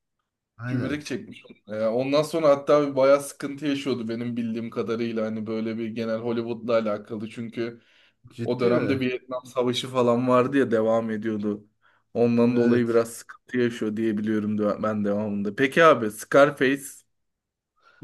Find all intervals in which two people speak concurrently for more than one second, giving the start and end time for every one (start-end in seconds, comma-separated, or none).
none